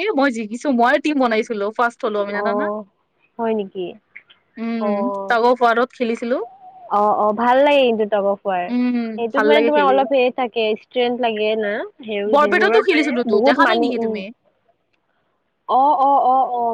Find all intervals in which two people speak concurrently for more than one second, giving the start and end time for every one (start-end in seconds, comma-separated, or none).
12.3-14.2